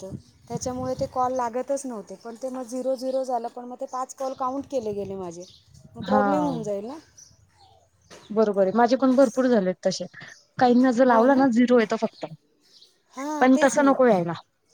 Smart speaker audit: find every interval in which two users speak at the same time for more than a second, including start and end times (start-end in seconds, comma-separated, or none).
none